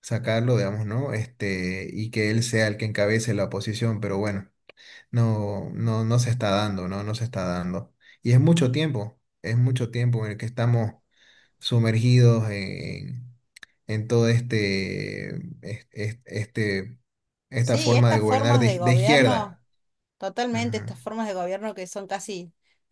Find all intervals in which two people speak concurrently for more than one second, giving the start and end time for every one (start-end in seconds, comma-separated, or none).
17.6-19.6